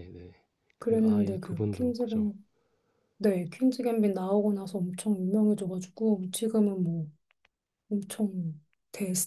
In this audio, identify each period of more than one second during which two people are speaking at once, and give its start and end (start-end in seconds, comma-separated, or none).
0.8-2.3